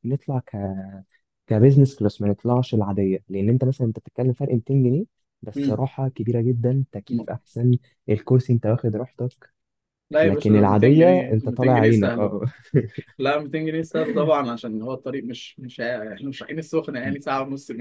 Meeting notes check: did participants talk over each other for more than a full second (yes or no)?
yes